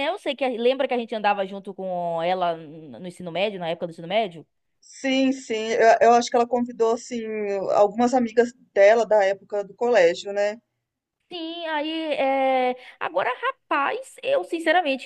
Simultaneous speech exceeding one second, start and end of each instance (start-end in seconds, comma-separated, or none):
none